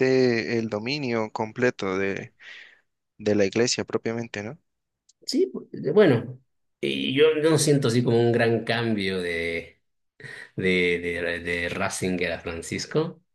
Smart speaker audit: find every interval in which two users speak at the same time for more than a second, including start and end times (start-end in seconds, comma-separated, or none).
none